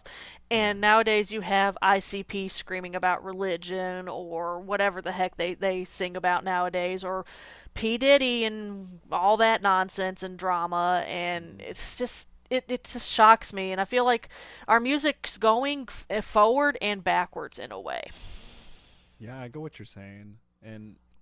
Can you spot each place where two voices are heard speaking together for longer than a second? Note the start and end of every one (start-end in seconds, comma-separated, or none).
none